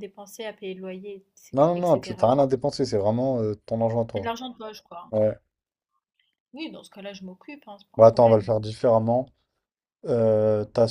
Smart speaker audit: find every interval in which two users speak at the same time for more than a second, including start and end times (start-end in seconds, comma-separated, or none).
none